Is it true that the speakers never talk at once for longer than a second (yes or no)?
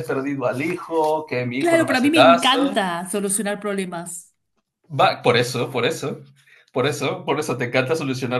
no